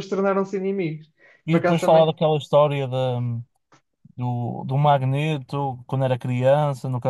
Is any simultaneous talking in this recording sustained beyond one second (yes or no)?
no